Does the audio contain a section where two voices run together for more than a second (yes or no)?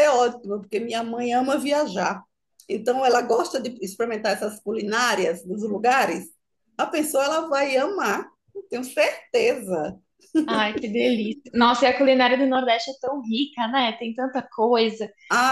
no